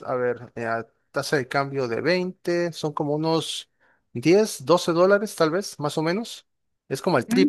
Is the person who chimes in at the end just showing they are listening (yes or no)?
no